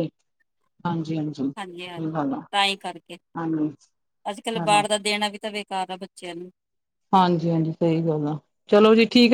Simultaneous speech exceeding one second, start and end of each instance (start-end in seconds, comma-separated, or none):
none